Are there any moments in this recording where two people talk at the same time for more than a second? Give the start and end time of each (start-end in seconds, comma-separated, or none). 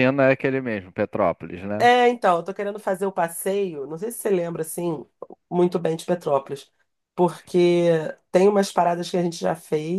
none